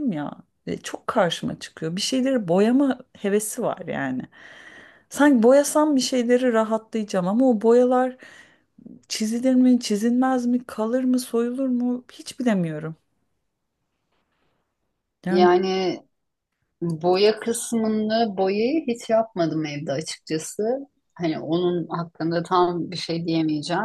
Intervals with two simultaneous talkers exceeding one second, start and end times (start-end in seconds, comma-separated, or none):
none